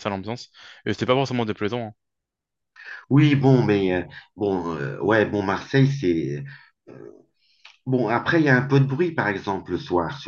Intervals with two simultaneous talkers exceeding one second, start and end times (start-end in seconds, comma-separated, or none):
none